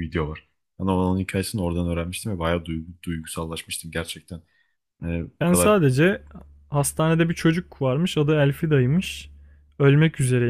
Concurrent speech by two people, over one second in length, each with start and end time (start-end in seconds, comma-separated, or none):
none